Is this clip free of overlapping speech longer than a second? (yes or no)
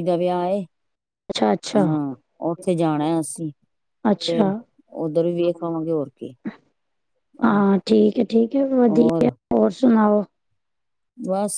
yes